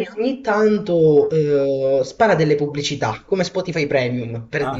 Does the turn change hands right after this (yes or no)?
yes